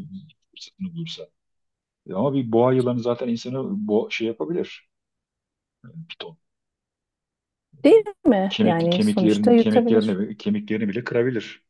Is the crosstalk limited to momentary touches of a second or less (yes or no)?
no